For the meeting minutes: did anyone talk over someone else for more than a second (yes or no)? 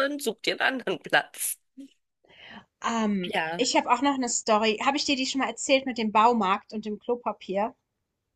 no